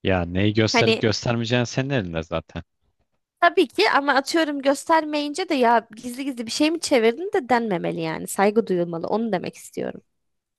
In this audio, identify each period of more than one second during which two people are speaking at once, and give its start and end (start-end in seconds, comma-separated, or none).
none